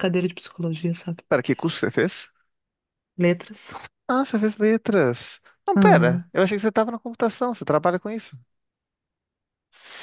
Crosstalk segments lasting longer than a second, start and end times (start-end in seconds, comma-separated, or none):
none